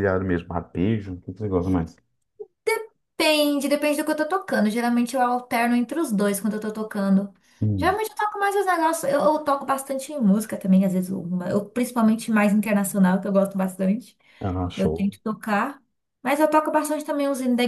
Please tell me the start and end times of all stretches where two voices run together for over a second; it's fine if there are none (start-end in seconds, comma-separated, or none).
none